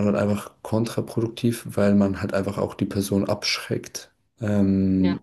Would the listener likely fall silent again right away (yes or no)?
yes